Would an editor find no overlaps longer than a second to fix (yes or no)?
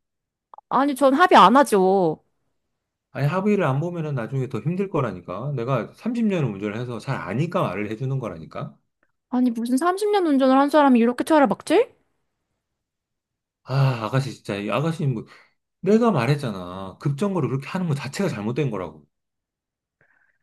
yes